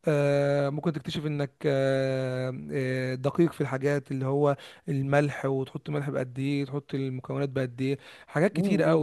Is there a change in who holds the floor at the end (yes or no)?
yes